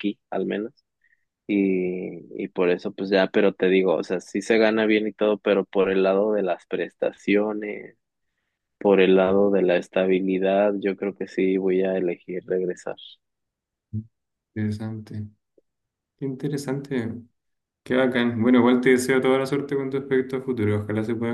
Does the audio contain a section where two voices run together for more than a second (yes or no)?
no